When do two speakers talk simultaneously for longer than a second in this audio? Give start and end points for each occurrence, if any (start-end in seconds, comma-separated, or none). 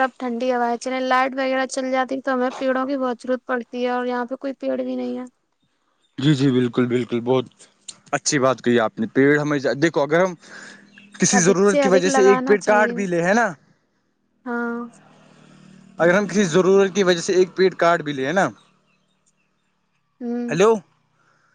11.4-12.9